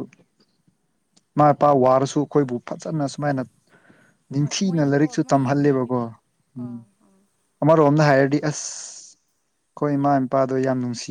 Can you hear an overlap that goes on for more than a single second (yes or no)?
yes